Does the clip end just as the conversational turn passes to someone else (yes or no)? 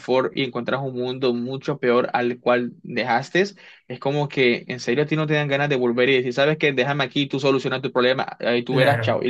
yes